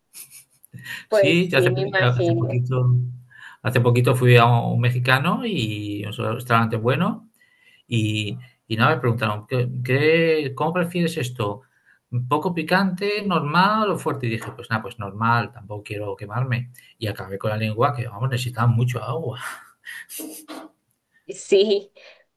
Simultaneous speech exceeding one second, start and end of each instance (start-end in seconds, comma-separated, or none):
1.1-2.6